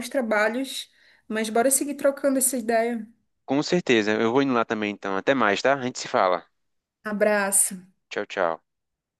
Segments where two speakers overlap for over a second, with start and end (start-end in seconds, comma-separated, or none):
none